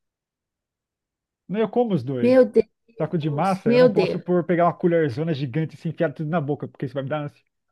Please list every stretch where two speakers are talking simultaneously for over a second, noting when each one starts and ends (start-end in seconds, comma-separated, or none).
3.0-4.2